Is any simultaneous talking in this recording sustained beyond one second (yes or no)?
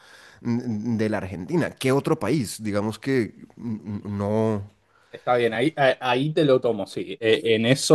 no